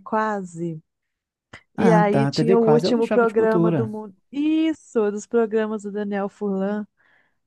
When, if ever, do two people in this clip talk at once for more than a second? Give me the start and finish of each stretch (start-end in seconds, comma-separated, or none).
1.8-4.0